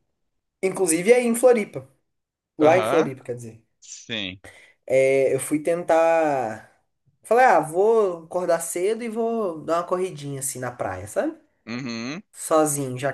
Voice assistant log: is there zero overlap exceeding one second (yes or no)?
yes